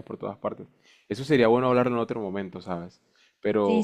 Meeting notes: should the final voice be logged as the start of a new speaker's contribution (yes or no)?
yes